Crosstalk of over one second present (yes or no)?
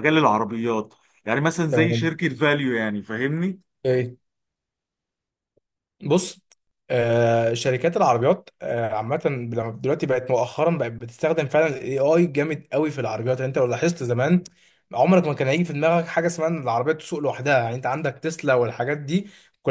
no